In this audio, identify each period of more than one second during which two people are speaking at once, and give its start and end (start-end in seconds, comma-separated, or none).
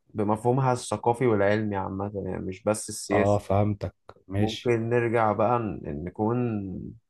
none